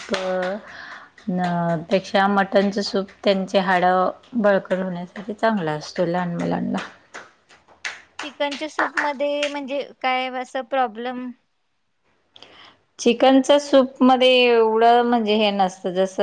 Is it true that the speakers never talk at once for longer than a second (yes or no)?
yes